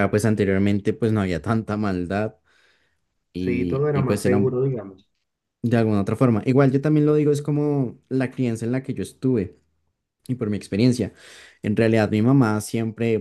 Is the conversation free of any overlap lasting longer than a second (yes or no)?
no